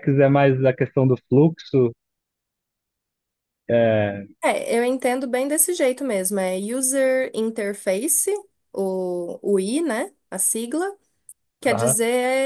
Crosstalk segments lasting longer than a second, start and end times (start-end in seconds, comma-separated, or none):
none